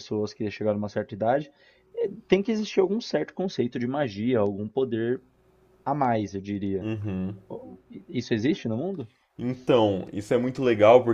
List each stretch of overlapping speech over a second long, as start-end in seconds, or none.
none